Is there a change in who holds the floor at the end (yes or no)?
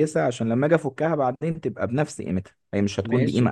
yes